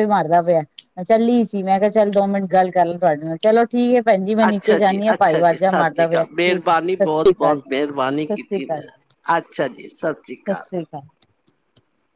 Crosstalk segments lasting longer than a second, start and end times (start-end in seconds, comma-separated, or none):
4.5-7.6